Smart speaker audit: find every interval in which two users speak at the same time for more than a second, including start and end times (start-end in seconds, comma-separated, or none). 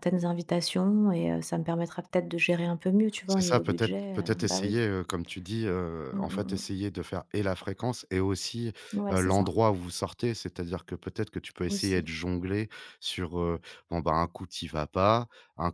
3.2-4.8